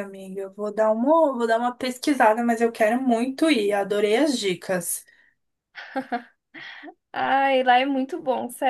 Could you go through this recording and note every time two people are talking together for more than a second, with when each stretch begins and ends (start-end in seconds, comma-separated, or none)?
none